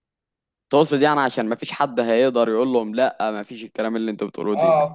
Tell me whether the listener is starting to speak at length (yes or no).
yes